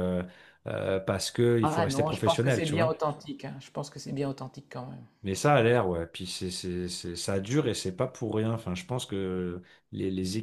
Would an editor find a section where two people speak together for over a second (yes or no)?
yes